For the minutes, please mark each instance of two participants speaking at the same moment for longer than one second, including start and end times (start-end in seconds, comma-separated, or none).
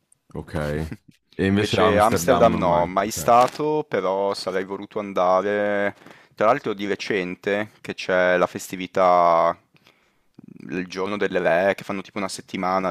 1.6-3.2